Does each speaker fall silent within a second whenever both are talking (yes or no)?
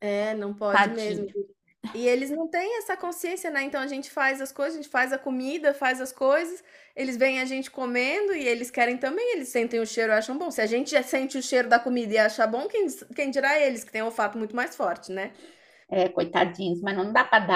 yes